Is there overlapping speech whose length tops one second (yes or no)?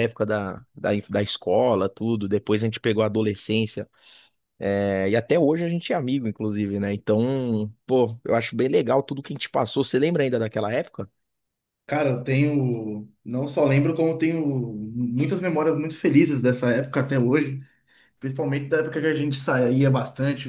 no